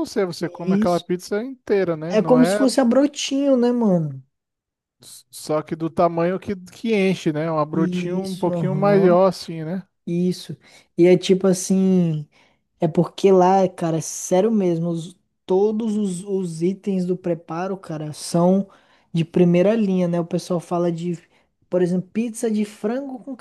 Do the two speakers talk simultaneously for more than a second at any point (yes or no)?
yes